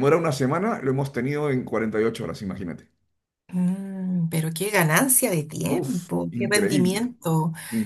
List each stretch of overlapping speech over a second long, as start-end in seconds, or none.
5.7-7.1